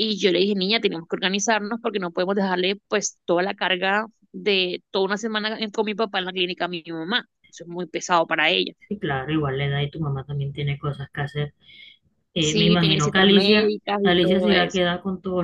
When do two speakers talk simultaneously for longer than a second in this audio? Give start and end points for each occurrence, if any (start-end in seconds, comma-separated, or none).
12.4-14.8